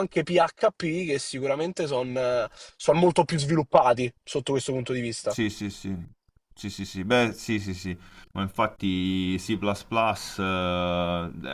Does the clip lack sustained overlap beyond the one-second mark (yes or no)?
yes